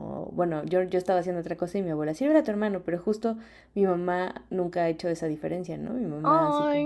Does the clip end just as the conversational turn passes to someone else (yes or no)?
no